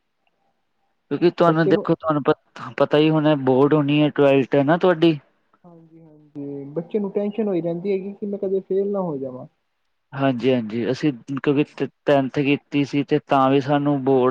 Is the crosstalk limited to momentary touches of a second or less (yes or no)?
yes